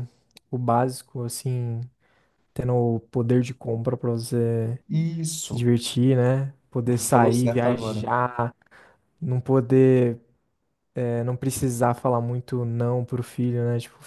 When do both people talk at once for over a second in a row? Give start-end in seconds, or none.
6.8-8.1